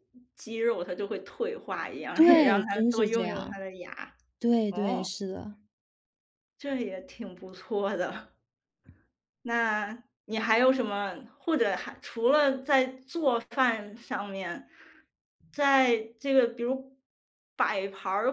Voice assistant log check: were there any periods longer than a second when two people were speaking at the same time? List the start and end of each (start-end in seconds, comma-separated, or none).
2.1-3.6